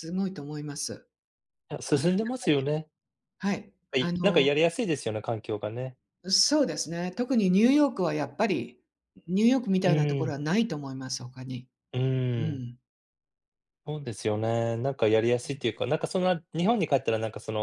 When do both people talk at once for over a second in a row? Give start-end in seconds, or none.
none